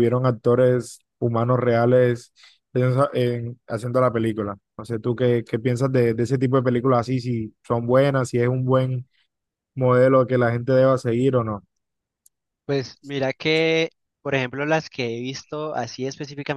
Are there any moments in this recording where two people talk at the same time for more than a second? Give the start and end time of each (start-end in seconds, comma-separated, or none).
none